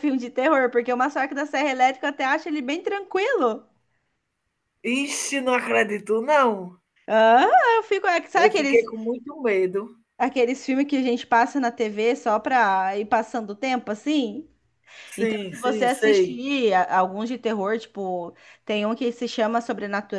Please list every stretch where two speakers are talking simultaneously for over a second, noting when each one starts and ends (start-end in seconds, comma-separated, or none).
15.2-16.4